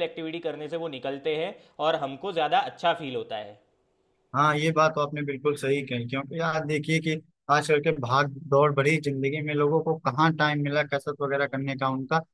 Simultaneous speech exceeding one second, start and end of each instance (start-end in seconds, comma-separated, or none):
none